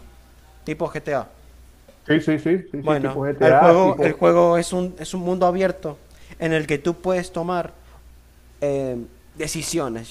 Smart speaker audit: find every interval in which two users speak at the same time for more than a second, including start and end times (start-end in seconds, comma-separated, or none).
2.8-4.2